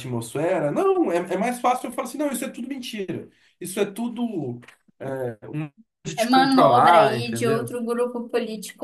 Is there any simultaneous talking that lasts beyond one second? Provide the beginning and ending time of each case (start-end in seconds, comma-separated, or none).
6.2-7.7